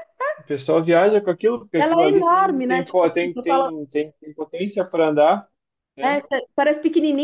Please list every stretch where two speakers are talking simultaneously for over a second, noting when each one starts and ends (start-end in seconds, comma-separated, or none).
1.8-3.7